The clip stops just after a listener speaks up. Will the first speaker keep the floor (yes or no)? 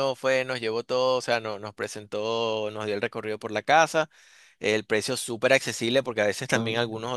yes